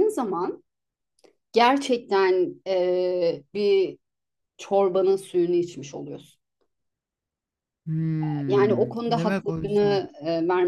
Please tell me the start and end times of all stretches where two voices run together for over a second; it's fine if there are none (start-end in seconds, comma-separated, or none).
8.5-10.0